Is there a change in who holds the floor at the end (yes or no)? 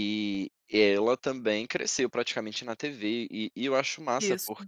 no